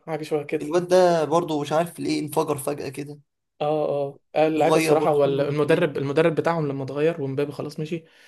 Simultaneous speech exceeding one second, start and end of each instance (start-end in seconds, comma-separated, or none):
4.6-5.9